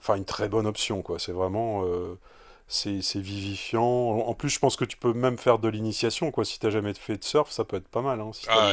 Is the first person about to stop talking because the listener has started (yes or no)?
yes